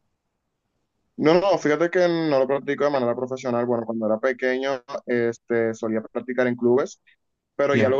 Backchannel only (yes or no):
yes